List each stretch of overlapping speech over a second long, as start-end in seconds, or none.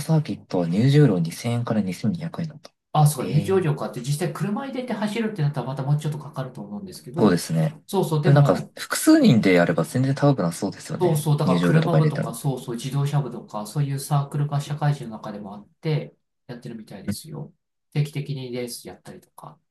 11.0-12.4